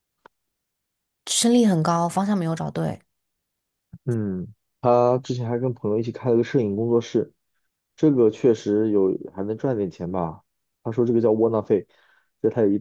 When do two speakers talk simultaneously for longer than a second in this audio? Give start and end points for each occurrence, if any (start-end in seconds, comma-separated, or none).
none